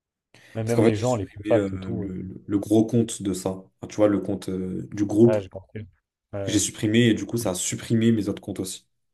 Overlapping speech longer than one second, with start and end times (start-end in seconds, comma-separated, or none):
0.6-2.3